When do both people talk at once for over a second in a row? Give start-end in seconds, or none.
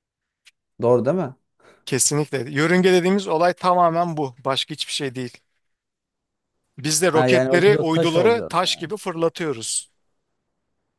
7.1-8.9